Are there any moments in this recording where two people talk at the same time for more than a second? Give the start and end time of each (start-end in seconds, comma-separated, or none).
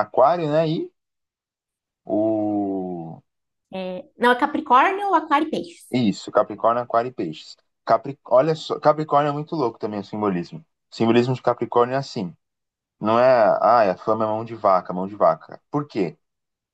none